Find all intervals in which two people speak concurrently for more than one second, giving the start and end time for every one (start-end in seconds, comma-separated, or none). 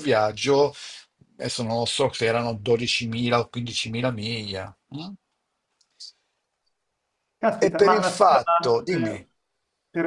7.6-9.2